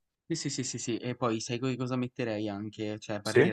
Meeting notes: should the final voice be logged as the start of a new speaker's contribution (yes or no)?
no